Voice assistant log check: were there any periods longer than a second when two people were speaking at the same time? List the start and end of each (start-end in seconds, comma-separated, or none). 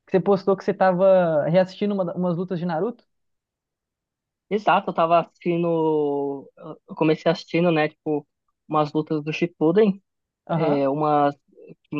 none